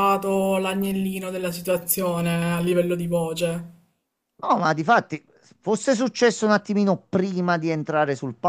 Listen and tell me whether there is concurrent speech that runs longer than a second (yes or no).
no